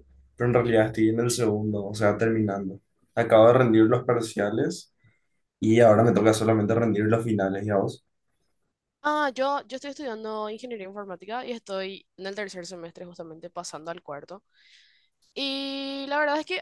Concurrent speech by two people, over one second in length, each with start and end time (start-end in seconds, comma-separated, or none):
none